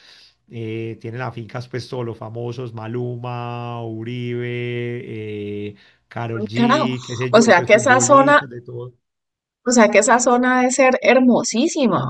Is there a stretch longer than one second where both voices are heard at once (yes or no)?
yes